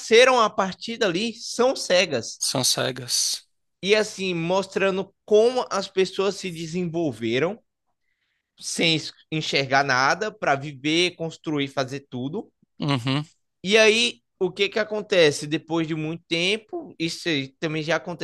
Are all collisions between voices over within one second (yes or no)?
yes